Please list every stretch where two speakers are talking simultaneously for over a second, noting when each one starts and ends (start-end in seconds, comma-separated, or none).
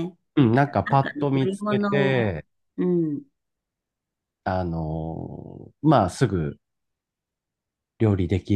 0.8-2.3